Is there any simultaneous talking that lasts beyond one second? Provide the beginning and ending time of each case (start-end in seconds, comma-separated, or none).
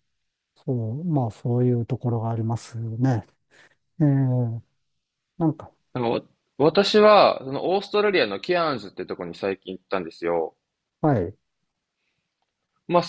none